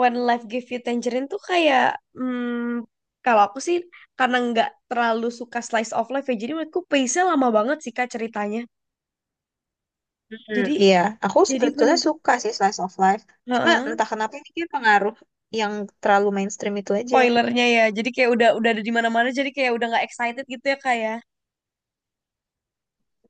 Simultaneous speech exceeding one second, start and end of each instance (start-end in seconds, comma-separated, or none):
none